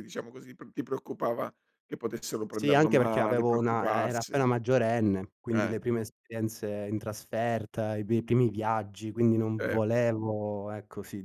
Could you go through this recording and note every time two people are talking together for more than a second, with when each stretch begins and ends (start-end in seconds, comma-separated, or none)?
2.5-4.4